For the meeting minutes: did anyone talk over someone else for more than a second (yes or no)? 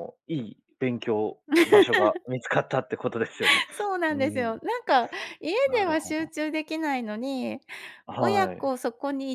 no